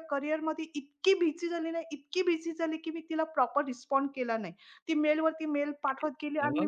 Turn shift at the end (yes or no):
no